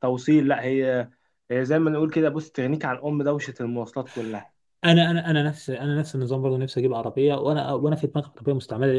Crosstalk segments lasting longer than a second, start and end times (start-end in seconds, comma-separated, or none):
none